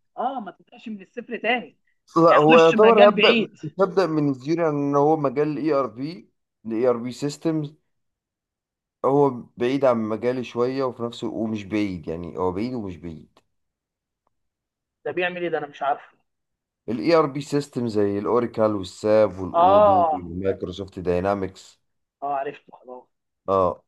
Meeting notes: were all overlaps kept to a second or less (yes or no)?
no